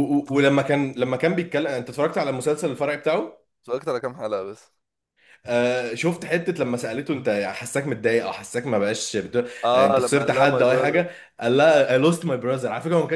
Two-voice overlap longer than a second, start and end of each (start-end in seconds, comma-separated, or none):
9.7-11.0